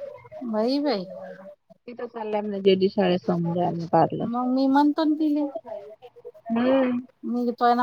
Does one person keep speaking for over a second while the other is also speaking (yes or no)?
no